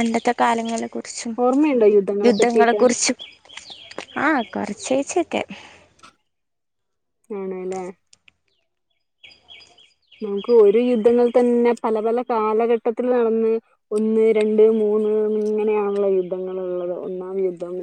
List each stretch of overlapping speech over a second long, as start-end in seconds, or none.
none